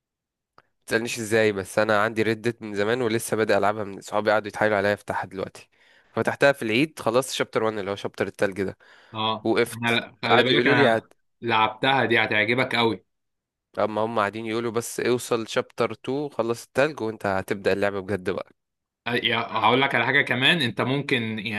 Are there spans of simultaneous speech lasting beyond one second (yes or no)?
yes